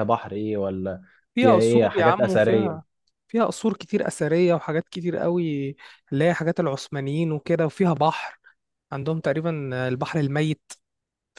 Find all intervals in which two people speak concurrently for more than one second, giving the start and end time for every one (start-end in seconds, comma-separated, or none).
1.4-2.8